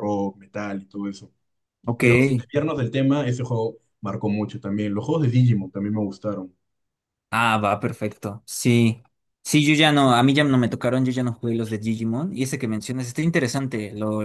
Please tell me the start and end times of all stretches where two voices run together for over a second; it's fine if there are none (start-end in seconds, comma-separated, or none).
none